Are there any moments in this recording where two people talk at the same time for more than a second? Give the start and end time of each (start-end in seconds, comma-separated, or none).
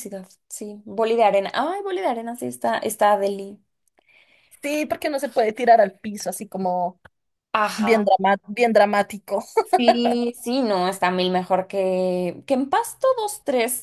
none